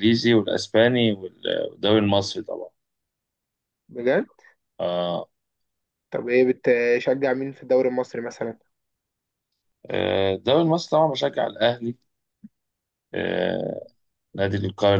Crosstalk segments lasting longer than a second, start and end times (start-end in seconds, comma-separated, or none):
none